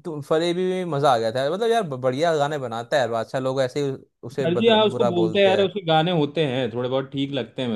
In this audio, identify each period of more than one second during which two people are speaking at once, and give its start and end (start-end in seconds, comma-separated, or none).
4.4-5.7